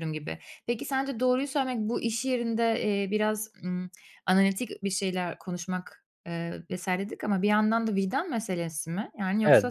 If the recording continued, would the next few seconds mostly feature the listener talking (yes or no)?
yes